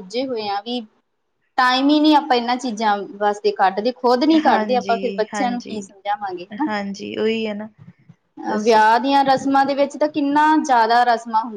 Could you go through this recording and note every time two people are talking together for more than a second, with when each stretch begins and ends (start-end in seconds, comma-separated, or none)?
4.5-5.8